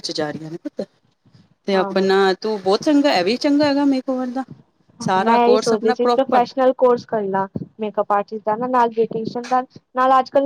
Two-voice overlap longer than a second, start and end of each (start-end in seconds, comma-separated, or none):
5.0-6.4